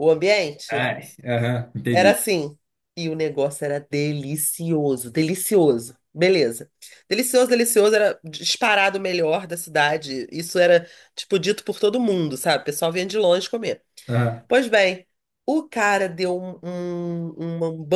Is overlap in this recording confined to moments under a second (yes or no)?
yes